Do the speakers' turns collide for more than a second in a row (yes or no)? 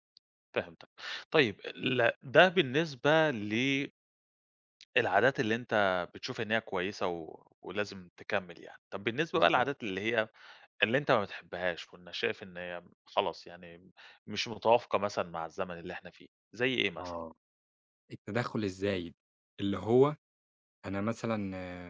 no